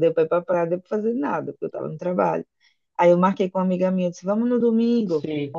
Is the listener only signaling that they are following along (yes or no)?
yes